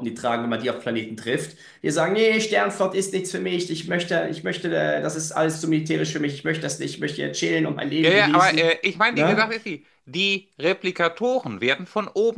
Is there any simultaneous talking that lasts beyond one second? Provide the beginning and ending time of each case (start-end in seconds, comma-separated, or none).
8.0-9.5